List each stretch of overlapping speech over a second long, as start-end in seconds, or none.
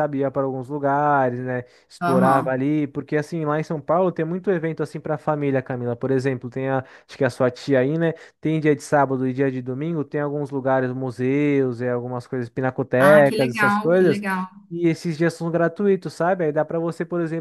12.9-14.2